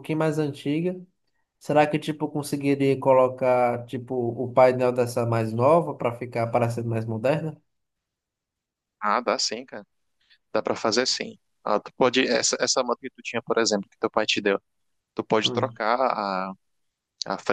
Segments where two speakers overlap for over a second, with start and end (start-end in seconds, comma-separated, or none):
none